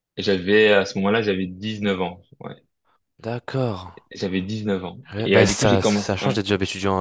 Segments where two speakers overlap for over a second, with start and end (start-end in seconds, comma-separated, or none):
5.1-6.4